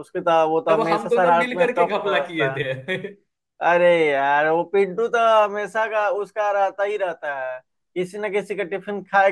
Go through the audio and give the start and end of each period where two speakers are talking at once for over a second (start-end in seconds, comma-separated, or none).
0.7-2.6